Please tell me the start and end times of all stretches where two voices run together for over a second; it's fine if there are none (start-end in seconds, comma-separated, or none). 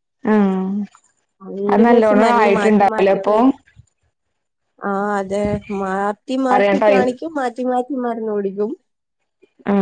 1.7-3.3